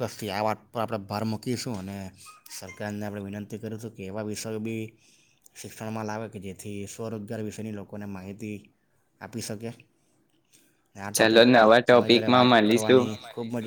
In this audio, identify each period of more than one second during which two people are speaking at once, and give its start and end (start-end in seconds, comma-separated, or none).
11.2-13.0